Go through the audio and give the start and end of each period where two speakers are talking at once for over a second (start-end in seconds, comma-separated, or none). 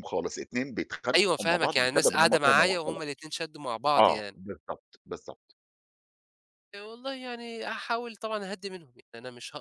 1.2-3.0